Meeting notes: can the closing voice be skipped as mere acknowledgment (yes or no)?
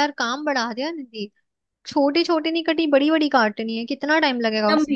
no